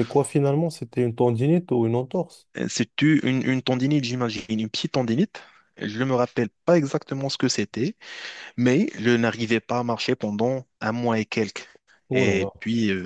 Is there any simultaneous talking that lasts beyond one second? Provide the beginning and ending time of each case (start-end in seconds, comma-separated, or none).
none